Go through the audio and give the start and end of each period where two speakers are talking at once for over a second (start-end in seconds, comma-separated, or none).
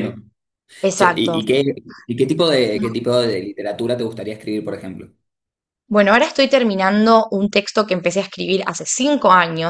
none